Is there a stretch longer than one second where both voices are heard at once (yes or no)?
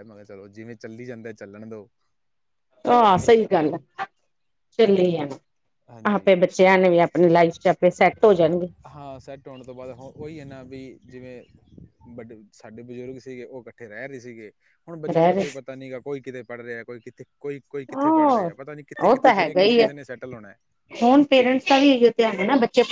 no